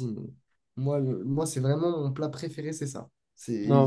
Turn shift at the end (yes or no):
yes